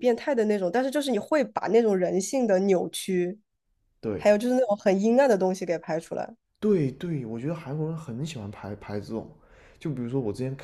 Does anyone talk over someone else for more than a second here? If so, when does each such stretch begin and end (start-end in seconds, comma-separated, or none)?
none